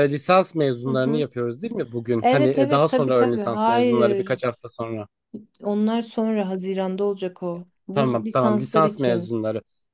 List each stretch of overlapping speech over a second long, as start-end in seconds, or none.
2.2-4.6, 7.9-9.3